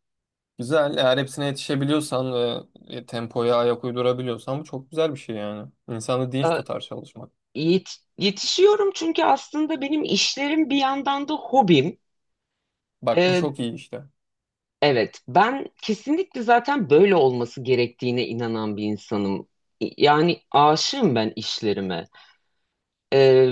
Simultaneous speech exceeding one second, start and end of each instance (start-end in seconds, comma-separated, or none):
none